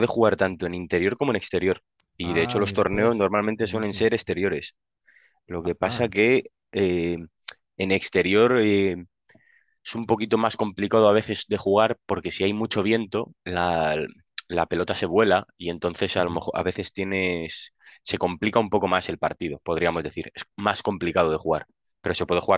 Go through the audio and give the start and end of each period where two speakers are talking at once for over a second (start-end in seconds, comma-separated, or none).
2.2-4.1